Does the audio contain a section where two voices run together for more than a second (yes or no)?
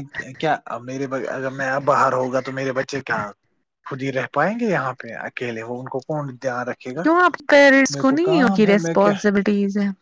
no